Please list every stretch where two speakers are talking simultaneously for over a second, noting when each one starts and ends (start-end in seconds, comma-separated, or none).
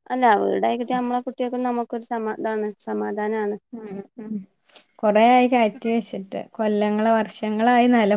none